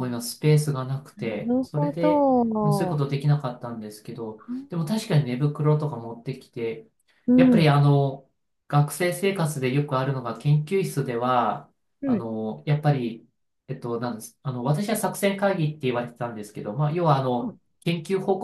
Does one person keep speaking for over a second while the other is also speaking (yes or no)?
yes